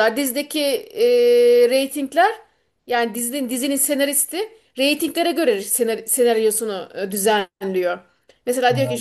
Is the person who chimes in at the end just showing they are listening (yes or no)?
yes